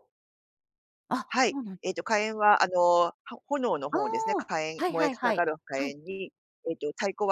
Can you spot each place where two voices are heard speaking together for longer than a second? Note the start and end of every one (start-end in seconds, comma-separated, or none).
3.9-6.0